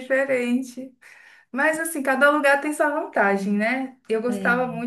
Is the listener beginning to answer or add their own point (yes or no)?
no